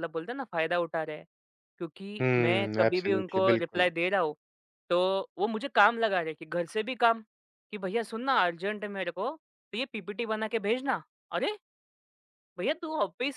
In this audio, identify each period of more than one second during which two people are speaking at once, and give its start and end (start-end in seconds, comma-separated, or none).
2.2-3.9